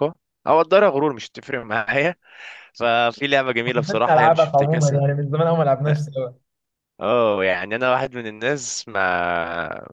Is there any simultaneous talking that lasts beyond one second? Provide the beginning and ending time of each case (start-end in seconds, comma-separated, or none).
3.6-5.0